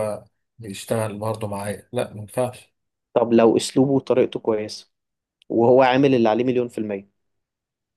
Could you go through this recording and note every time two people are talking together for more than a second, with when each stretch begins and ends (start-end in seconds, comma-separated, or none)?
none